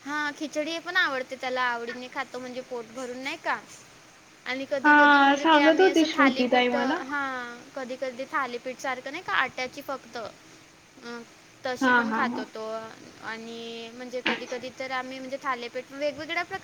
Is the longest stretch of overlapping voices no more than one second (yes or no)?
no